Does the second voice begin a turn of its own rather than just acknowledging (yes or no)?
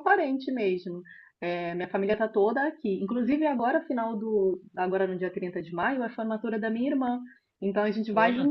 no